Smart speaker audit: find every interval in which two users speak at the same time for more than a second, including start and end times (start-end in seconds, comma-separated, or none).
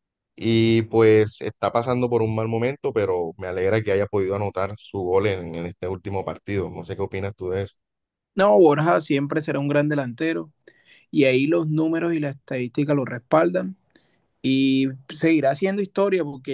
none